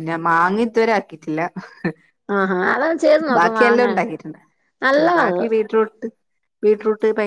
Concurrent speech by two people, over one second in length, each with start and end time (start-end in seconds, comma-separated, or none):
none